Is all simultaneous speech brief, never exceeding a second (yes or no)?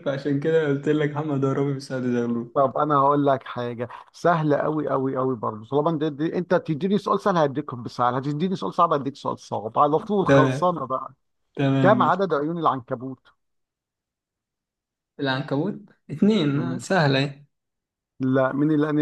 yes